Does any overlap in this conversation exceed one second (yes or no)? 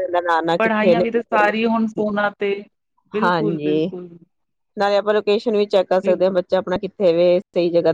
no